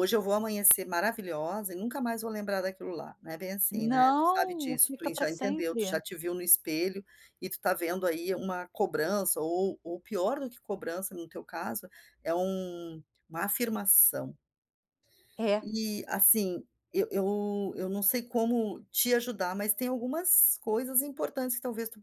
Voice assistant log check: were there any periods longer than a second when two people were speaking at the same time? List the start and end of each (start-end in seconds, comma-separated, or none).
3.7-6.0